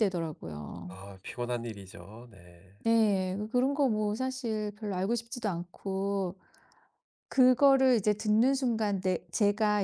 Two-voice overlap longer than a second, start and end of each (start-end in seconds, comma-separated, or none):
none